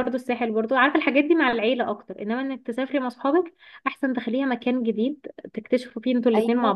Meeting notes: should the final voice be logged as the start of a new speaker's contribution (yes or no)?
yes